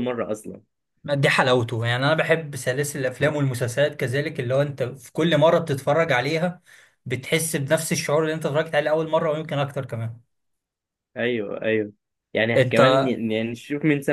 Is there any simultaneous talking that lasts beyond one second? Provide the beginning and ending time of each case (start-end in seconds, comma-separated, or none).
none